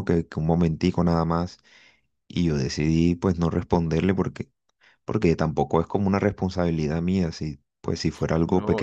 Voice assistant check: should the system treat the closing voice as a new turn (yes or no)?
yes